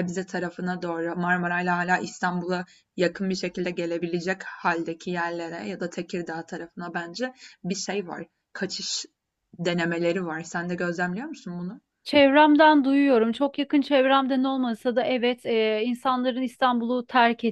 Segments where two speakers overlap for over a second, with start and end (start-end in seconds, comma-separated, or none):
none